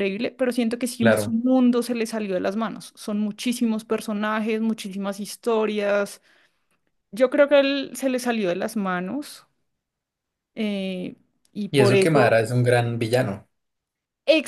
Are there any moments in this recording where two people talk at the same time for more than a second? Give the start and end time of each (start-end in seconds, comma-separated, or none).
none